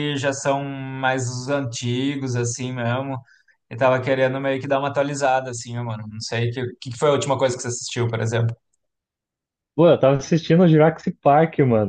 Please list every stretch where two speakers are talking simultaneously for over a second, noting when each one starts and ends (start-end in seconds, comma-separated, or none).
none